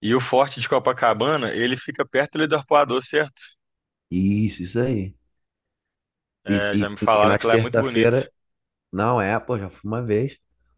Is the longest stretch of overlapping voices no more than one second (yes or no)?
no